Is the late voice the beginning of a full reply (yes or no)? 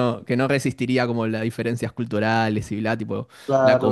yes